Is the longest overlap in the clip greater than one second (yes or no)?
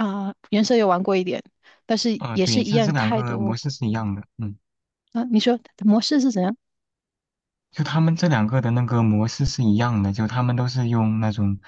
yes